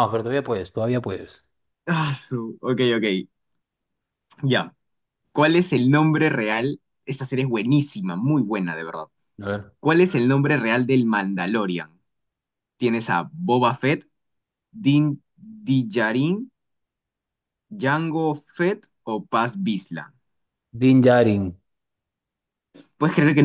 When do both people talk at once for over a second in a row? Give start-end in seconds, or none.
none